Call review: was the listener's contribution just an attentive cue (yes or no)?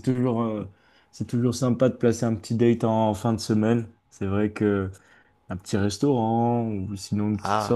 yes